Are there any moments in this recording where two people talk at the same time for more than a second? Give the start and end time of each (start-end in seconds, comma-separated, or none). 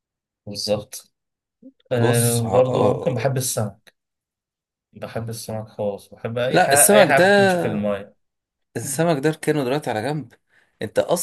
2.0-3.4, 6.5-7.9